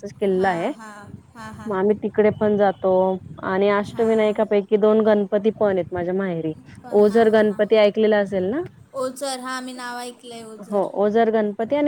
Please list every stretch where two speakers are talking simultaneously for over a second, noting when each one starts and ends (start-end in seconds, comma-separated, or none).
none